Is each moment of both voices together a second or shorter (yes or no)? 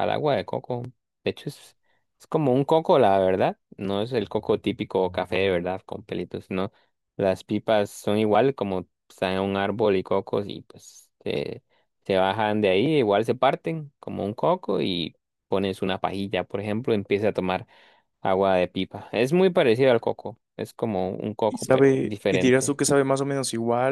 no